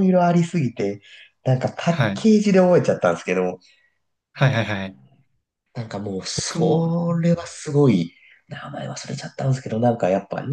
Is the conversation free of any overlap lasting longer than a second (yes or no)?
yes